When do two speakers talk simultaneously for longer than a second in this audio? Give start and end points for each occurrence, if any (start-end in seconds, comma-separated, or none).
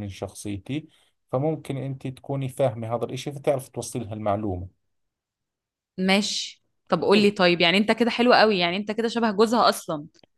none